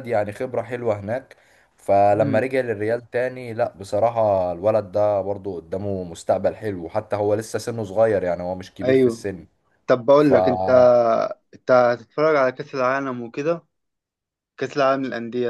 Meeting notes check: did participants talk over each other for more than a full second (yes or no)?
no